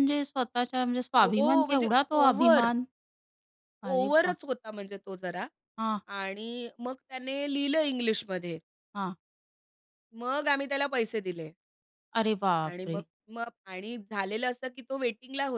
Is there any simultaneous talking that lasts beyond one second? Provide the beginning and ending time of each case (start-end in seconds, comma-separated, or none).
1.2-2.7